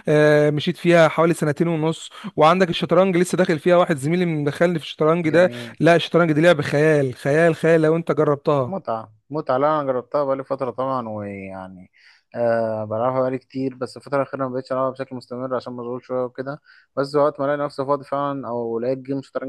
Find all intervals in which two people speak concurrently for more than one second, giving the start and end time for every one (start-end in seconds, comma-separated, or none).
none